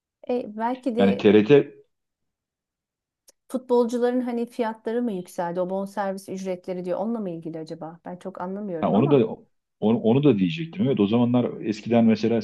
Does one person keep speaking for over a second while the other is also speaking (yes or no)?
no